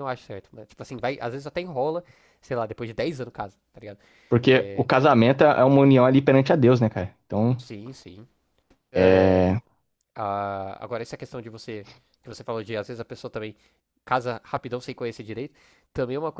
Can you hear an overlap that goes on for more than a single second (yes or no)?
no